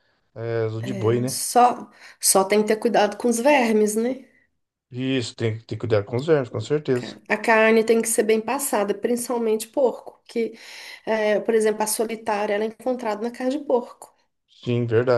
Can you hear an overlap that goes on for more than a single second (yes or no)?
no